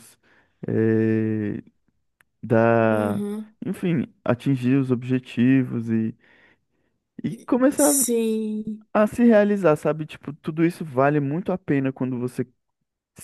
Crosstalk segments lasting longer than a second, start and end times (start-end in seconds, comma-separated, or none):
none